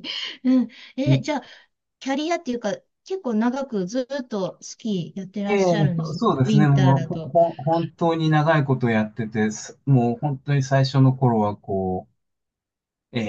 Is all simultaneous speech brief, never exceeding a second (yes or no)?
no